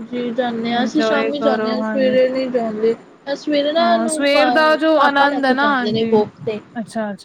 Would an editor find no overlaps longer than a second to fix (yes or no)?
no